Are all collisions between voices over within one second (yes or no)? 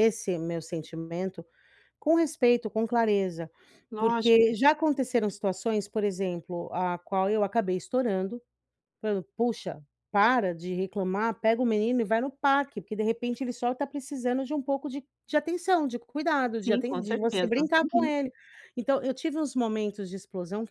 no